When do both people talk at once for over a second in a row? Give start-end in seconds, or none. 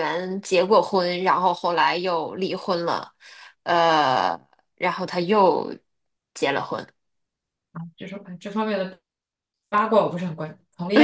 none